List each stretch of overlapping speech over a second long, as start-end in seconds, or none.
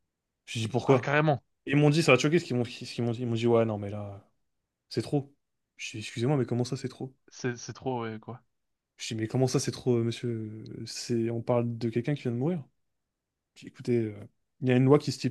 none